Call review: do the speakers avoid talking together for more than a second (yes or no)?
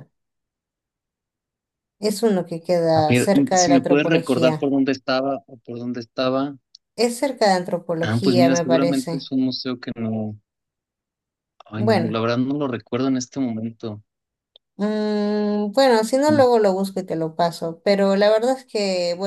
no